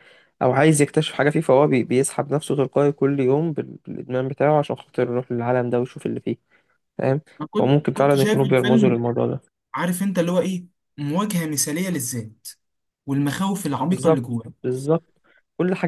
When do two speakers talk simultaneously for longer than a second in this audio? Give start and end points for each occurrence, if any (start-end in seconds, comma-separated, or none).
7.6-9.0